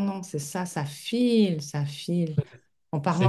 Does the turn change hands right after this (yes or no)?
no